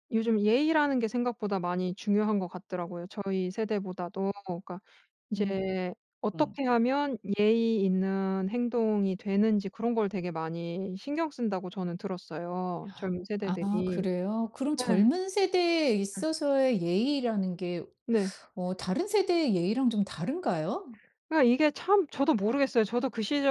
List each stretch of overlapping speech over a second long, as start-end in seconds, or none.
none